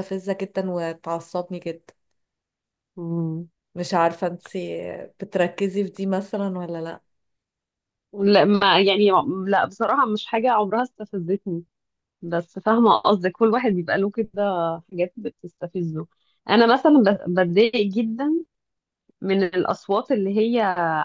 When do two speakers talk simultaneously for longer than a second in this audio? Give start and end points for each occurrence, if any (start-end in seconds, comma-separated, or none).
none